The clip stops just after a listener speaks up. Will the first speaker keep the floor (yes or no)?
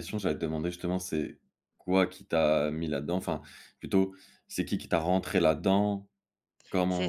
no